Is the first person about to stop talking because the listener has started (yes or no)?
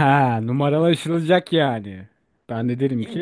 yes